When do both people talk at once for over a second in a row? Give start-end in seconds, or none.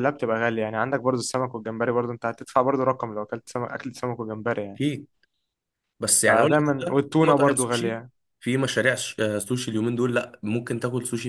6.3-8.0